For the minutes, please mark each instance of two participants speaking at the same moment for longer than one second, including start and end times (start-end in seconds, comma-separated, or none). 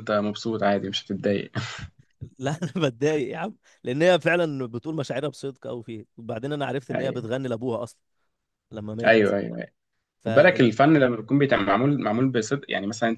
none